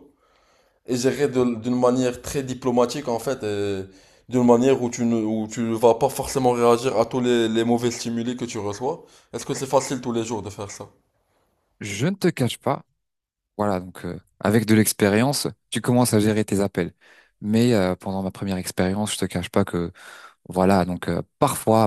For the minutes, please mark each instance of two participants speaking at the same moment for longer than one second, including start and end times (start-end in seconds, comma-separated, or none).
none